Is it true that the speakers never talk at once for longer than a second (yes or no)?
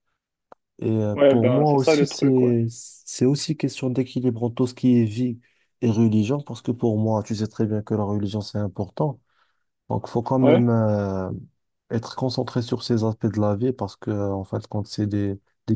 no